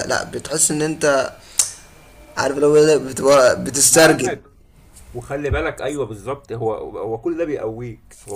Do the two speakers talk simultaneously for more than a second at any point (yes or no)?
no